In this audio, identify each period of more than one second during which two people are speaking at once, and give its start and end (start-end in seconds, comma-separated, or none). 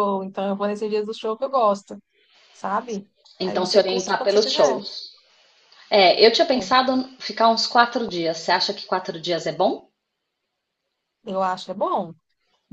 3.4-4.8